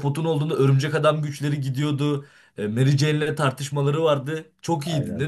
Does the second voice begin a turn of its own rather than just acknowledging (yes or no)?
yes